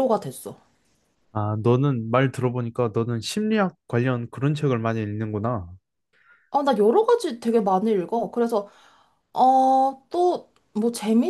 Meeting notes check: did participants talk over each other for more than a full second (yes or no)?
no